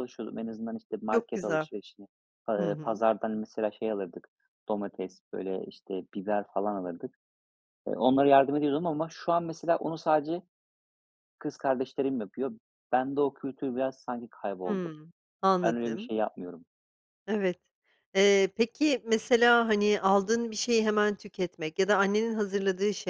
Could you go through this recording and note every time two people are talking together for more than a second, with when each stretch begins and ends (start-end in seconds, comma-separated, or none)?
none